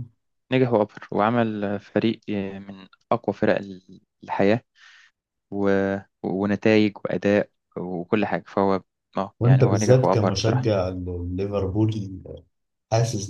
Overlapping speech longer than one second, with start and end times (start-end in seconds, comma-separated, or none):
9.4-10.7